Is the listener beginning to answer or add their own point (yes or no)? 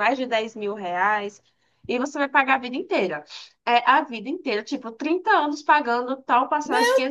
yes